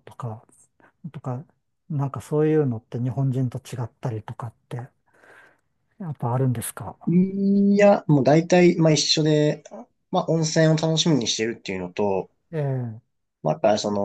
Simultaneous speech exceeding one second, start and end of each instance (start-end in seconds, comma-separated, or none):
none